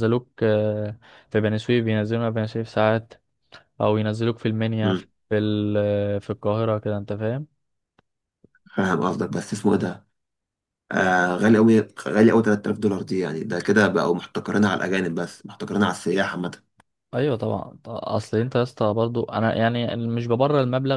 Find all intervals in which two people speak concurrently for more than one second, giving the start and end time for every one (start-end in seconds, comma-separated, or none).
none